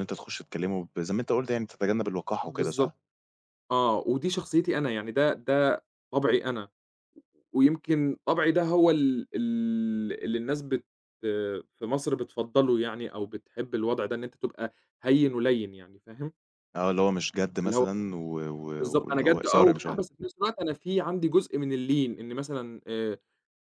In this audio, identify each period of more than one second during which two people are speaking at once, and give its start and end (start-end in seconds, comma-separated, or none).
18.8-20.0